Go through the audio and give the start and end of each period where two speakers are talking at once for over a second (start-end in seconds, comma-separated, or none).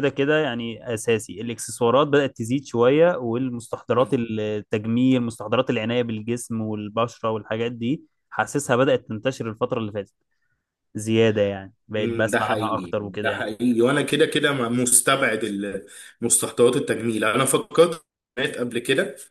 12.0-13.5